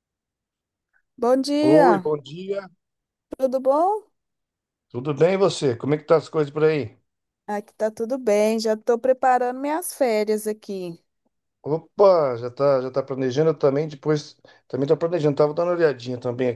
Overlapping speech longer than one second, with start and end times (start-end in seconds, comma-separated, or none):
none